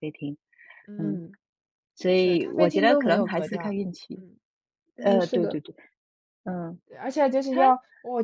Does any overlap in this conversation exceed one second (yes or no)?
yes